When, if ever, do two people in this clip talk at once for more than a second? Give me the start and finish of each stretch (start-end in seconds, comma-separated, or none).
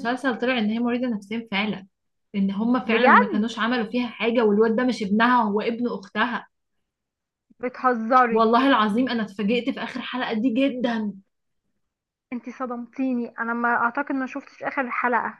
none